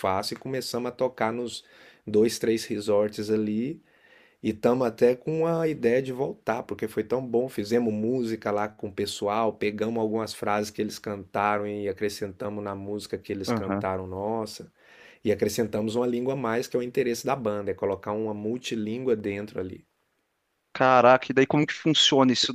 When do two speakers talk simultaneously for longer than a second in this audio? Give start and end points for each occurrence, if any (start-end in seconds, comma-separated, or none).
none